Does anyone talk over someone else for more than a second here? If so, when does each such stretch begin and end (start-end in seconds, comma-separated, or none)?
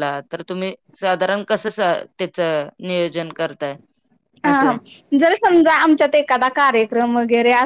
none